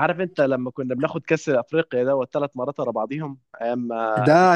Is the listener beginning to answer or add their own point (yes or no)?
yes